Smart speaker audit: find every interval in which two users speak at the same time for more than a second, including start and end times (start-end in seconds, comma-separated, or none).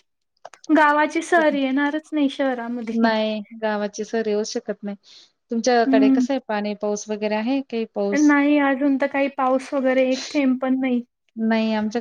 none